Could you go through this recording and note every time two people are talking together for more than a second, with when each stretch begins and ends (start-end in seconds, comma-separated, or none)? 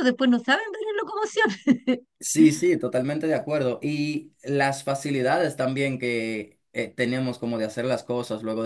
none